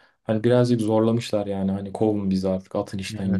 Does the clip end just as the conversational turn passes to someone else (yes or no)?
yes